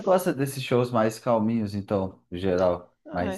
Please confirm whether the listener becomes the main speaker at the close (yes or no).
yes